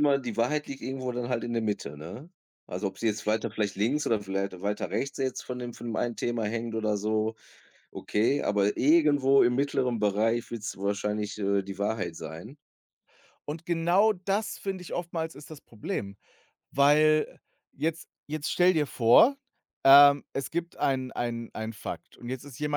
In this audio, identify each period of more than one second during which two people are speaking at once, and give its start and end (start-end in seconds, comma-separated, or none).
none